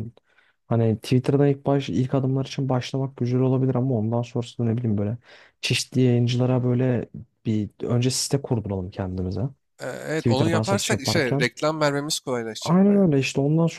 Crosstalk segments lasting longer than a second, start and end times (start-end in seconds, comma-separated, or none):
10.2-11.5